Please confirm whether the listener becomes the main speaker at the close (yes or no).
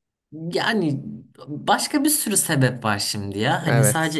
no